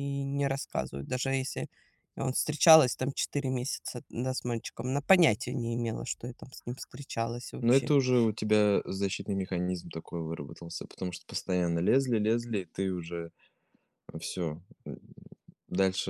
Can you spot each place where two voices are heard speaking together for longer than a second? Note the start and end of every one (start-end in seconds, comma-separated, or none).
none